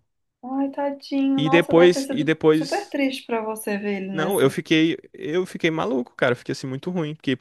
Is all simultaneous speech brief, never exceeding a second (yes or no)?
no